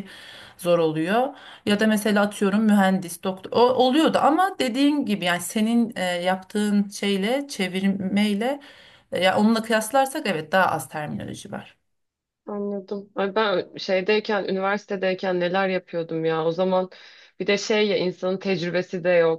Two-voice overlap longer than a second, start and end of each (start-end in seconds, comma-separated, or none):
none